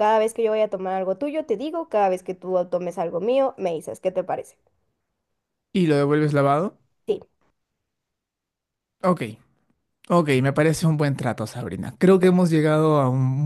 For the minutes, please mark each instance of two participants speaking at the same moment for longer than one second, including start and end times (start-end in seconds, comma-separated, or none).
none